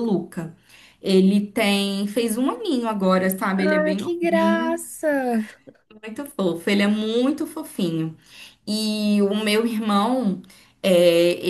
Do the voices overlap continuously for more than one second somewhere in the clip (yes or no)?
yes